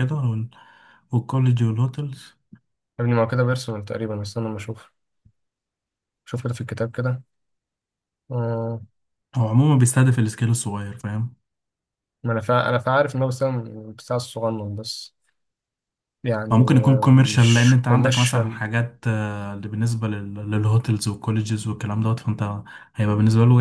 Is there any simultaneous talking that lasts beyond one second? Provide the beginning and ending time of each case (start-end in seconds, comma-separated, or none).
16.5-18.6